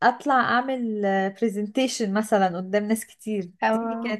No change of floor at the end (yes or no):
yes